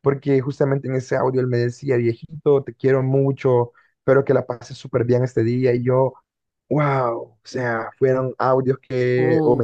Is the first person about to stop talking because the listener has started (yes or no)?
no